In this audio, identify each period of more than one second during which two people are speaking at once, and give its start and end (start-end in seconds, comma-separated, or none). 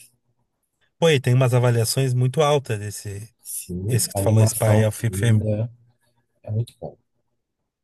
3.9-5.4